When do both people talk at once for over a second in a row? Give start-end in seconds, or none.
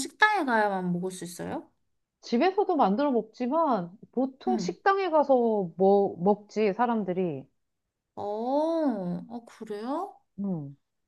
none